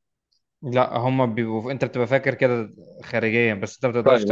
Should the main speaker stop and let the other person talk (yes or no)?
yes